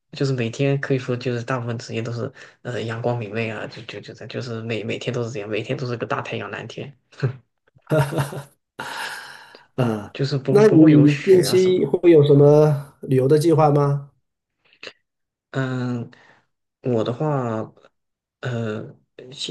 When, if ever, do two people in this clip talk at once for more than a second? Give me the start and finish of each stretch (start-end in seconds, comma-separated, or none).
10.5-11.9